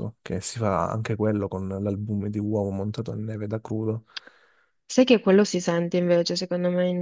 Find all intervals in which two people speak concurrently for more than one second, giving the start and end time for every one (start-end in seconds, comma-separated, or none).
none